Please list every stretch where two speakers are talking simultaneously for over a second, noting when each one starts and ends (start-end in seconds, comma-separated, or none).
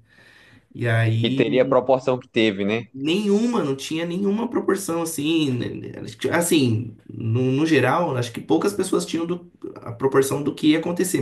none